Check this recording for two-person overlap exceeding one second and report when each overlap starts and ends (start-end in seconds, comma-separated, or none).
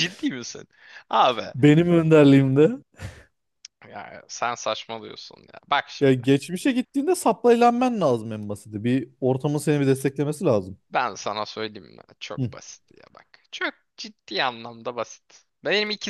none